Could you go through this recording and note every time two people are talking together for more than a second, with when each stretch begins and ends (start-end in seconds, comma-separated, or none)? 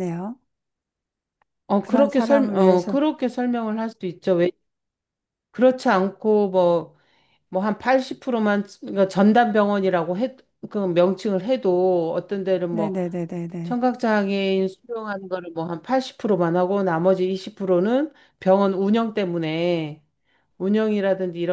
1.8-3.0